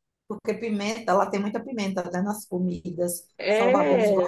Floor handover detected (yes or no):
no